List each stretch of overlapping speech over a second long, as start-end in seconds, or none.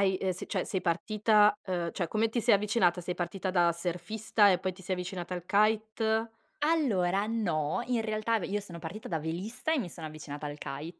none